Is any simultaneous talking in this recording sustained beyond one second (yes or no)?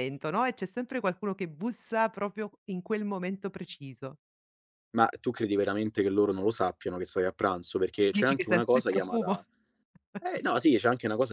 yes